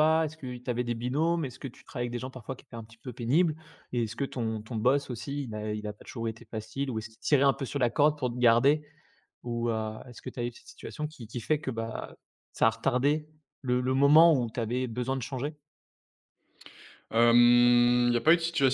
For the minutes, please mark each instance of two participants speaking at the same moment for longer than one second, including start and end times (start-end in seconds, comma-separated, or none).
none